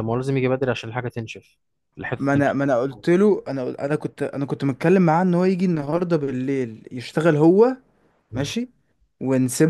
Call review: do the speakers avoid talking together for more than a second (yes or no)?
yes